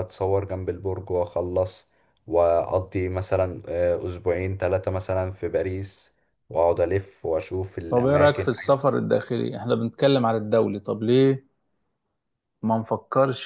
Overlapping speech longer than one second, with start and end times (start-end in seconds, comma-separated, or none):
none